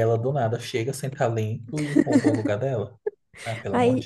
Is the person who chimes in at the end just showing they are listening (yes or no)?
no